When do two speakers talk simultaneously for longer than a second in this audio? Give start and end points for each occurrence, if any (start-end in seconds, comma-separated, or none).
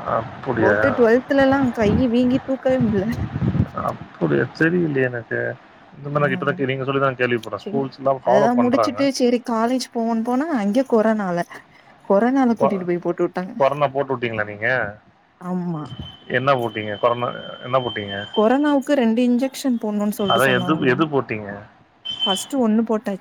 none